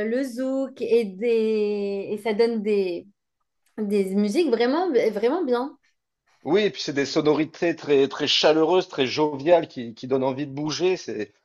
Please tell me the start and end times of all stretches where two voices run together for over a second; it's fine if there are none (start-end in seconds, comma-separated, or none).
none